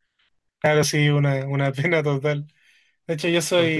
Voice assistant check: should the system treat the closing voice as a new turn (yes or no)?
no